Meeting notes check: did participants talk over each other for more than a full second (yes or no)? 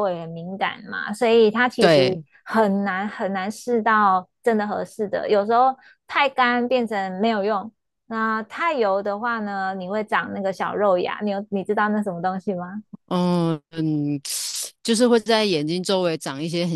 no